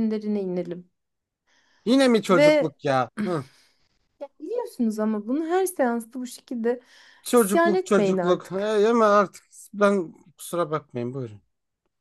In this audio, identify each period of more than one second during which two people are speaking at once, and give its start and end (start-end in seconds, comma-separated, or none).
7.3-8.7